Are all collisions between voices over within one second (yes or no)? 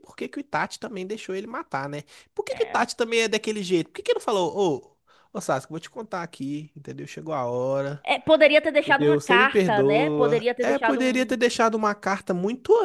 no